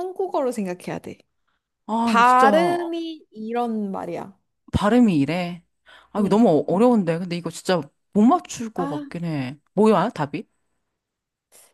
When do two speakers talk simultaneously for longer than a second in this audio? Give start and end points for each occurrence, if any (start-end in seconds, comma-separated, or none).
none